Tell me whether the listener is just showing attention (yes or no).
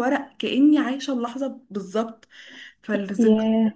yes